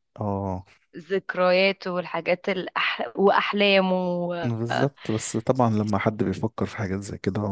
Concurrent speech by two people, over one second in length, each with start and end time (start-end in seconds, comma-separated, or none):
none